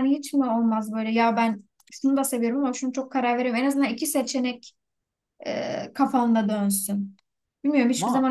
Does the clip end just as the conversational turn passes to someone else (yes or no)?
no